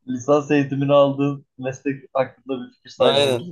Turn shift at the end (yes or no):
yes